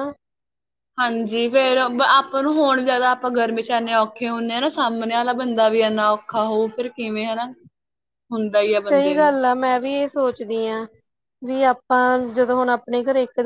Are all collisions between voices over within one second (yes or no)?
yes